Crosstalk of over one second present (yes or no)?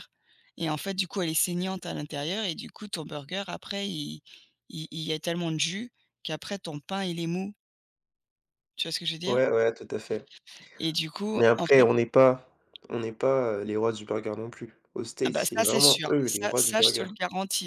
yes